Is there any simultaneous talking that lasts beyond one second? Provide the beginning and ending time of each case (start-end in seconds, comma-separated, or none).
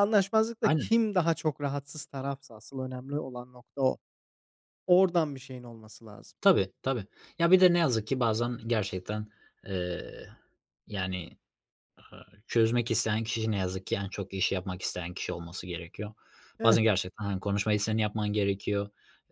none